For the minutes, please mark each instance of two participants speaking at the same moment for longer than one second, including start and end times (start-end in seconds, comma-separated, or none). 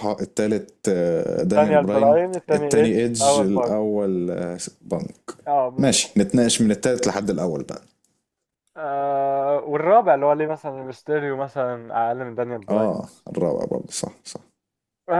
1.4-3.7